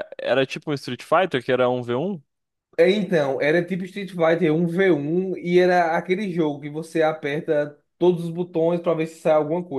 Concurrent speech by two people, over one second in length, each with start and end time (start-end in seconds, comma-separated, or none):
none